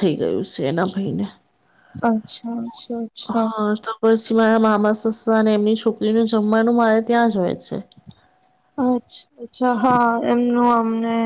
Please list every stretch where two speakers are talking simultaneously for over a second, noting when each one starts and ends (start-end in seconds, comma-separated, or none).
none